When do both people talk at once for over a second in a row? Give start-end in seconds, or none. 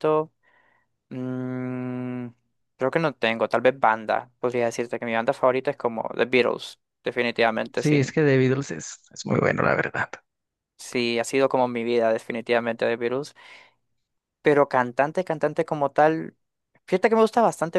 none